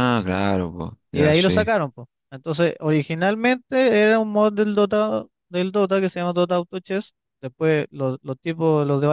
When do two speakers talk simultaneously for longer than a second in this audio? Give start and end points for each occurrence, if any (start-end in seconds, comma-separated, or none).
none